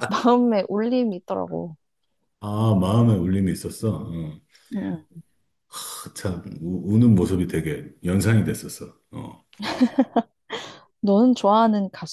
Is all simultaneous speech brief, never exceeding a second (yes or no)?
yes